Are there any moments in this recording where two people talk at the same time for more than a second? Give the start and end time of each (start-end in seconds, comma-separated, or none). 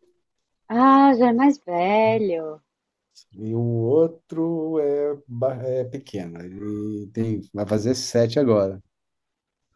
none